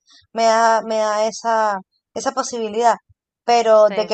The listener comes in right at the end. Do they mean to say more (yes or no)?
no